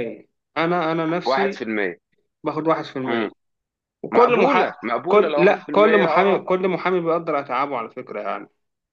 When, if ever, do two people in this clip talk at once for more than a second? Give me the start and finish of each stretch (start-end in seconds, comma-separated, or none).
4.1-6.5